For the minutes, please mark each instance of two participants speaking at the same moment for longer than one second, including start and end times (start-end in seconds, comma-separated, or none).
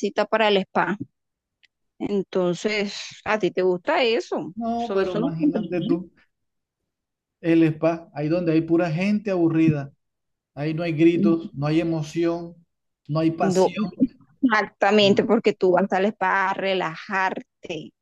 4.5-6.0